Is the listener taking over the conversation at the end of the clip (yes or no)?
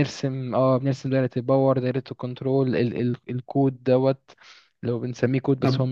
yes